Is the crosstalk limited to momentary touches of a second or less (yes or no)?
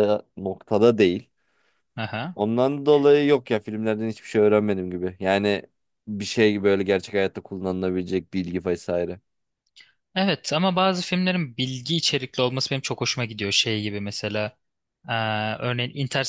yes